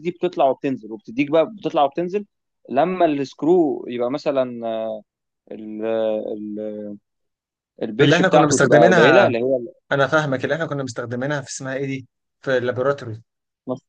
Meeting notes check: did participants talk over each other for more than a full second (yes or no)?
yes